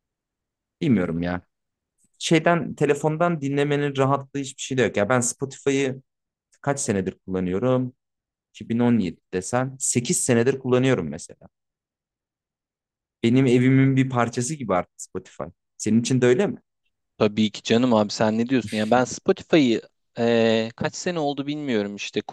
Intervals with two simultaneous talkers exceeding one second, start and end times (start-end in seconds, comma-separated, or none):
none